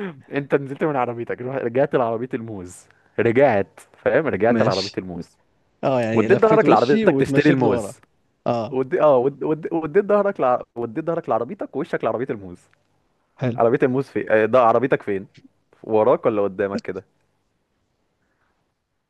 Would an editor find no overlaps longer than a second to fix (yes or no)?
no